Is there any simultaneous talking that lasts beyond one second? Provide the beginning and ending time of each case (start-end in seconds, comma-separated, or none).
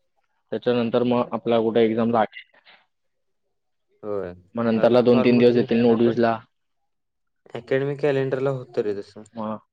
4.8-6.2